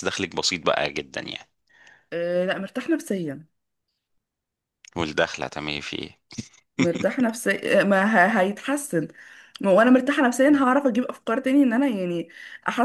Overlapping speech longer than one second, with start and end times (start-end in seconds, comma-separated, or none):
none